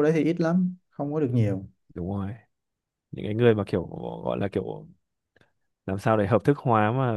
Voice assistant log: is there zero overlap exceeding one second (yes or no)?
yes